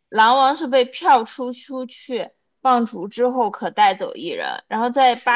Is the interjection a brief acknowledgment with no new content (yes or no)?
yes